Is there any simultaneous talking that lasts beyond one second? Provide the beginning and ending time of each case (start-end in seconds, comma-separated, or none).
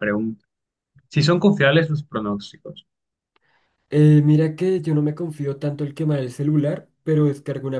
none